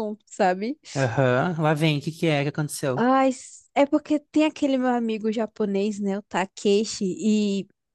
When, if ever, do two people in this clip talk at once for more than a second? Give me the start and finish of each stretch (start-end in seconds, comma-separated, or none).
none